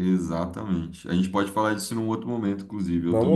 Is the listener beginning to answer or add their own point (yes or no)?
yes